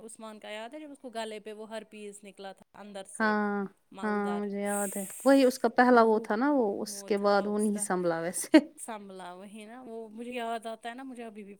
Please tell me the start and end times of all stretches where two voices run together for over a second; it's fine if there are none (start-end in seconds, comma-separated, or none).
none